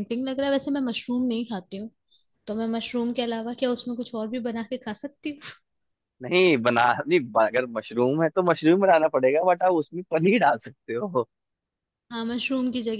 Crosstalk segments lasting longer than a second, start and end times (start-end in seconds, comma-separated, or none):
none